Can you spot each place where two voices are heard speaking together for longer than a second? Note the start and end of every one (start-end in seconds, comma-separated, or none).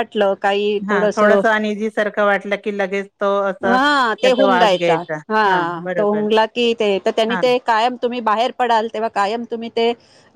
3.7-5.3